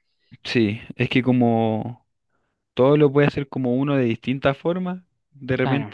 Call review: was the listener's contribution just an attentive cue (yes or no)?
yes